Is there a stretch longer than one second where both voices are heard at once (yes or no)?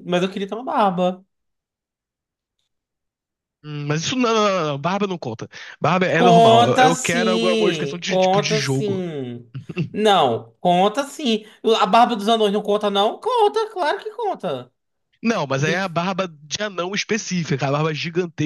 yes